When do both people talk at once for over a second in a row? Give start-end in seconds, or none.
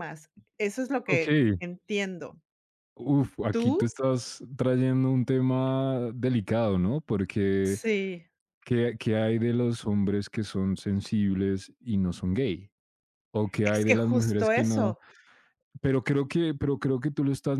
13.7-15.0